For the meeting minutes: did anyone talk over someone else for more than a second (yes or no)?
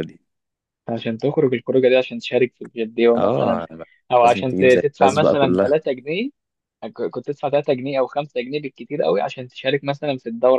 yes